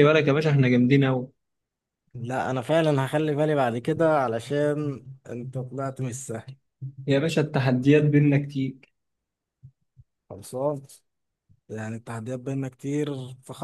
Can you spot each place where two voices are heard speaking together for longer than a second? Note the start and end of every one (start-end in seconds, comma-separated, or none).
none